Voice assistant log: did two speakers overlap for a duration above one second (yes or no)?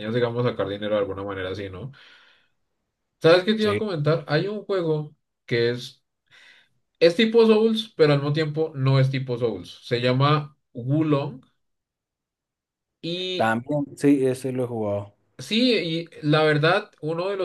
no